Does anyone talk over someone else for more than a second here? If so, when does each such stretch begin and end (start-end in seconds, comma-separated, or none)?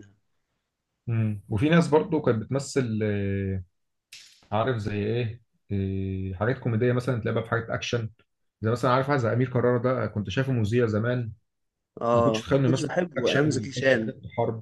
12.1-14.1